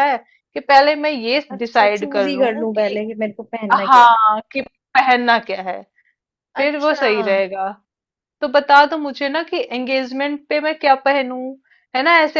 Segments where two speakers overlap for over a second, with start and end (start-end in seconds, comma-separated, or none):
1.6-3.0